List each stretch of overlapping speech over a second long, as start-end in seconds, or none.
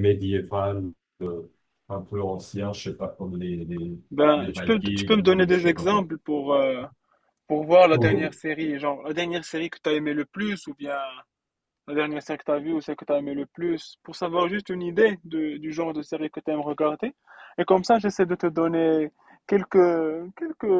4.4-6.1